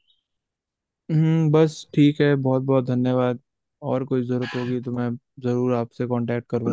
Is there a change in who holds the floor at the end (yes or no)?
yes